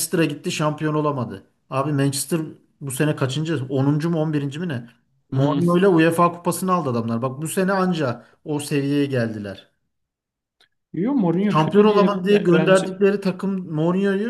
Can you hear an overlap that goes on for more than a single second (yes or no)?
yes